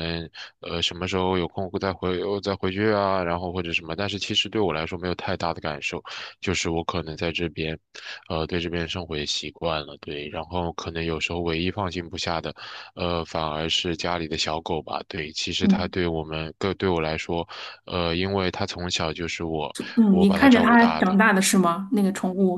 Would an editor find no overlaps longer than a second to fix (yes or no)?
no